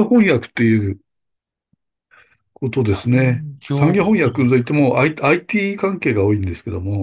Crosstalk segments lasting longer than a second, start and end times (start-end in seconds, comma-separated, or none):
3.1-4.7